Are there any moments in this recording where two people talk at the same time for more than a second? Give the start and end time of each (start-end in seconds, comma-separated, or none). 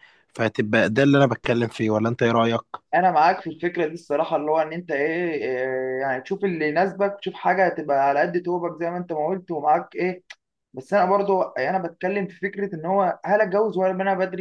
none